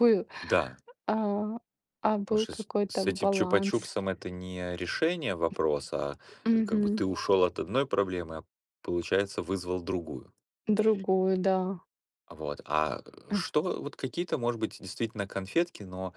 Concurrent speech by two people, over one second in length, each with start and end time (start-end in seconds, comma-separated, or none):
2.3-3.9